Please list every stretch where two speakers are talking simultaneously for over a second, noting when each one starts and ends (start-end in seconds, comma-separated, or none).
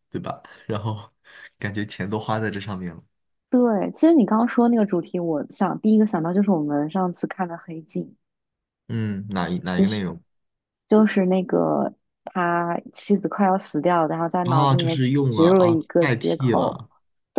14.4-16.8